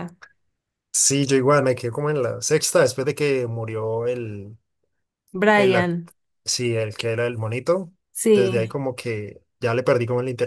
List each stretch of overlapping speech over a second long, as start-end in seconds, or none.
none